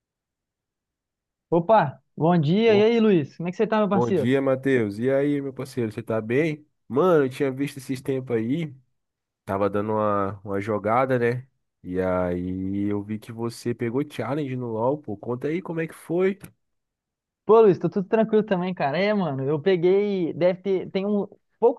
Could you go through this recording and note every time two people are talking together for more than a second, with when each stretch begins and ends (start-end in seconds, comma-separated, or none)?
none